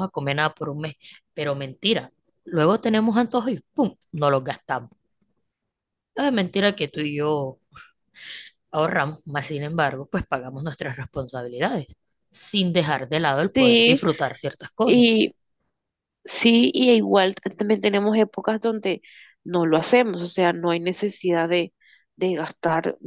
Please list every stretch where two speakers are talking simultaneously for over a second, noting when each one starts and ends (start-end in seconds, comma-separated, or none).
none